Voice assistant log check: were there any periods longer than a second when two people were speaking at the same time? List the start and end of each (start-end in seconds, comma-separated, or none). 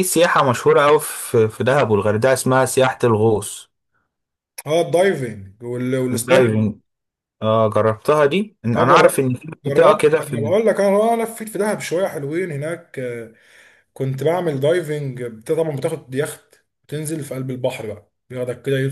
8.8-10.6